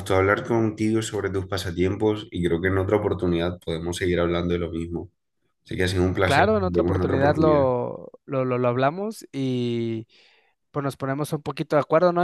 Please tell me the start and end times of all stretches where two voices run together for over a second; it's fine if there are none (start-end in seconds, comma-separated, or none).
6.2-7.7